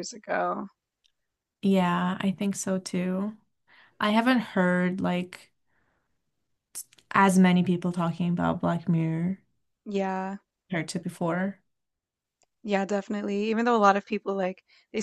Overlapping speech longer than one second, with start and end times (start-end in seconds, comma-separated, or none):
none